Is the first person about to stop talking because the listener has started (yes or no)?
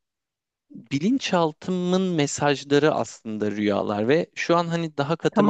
no